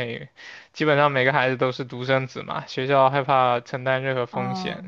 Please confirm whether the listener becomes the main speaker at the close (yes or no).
no